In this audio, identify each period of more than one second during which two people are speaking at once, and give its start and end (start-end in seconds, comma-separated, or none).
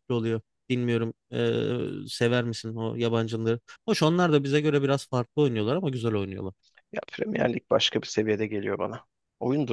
none